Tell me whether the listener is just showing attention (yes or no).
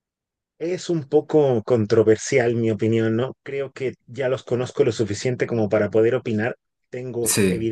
yes